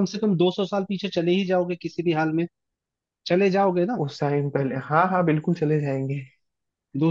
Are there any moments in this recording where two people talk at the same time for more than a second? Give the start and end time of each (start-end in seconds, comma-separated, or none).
none